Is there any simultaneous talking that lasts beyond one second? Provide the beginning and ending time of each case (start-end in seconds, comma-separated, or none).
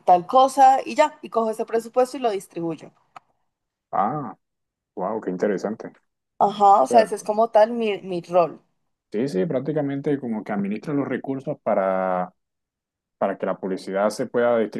none